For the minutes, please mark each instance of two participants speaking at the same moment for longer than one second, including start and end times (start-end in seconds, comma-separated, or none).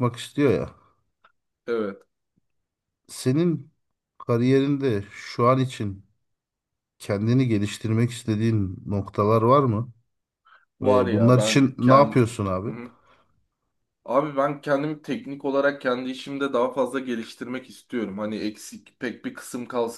10.8-12.8